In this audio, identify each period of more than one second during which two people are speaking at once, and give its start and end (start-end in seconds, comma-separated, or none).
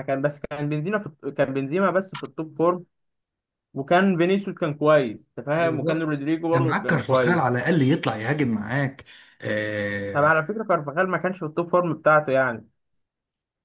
5.6-7.4